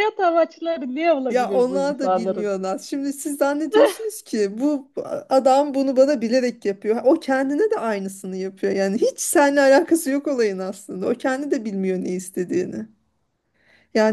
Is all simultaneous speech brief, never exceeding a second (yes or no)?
no